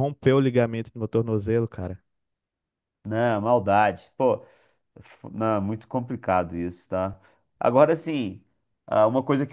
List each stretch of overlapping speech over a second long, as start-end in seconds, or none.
none